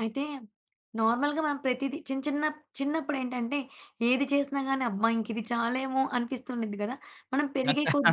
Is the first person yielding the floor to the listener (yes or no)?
no